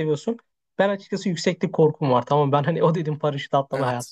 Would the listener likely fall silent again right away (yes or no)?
yes